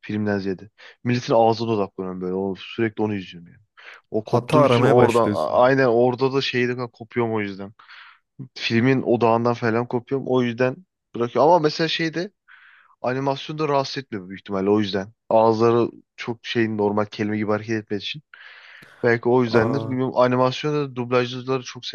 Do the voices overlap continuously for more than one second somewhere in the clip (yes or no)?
yes